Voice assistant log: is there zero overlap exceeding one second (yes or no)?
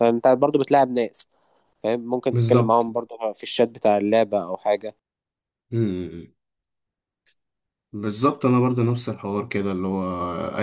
yes